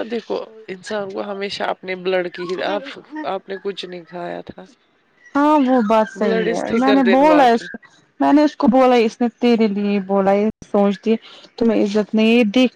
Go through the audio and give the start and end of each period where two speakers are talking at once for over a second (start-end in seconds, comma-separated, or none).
6.2-7.8